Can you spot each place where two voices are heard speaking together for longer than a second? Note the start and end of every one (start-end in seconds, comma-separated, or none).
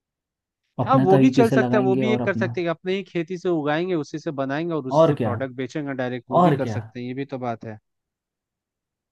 0.8-2.5